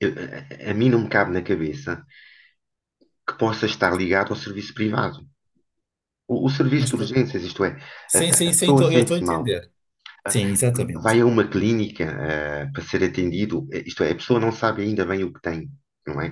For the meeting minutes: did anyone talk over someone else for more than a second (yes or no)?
yes